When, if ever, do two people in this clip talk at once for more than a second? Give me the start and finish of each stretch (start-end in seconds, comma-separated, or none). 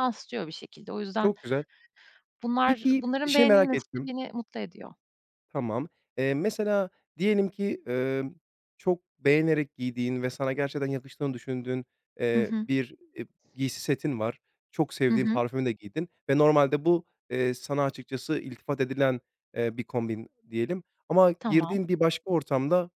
2.6-4.1